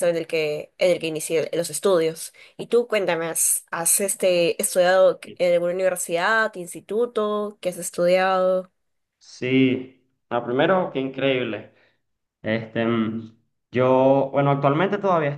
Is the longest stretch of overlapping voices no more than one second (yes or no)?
yes